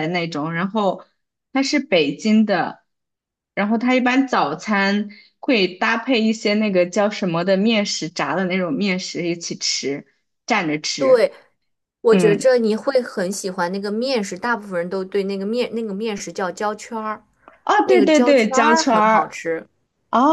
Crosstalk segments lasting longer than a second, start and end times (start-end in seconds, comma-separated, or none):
17.8-19.3